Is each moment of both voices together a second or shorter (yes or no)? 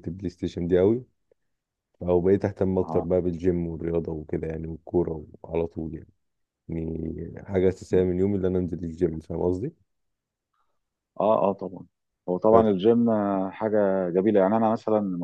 yes